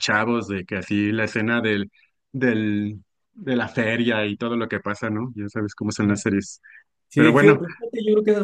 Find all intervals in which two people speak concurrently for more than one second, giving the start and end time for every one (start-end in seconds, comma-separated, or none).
none